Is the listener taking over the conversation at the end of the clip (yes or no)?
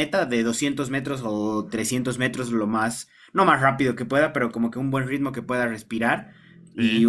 no